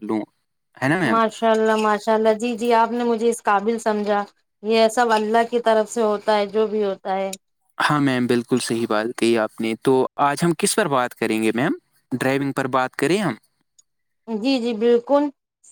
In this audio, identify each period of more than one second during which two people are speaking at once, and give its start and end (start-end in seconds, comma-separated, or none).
none